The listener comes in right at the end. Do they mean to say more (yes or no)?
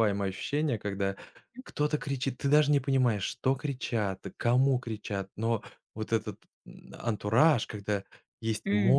no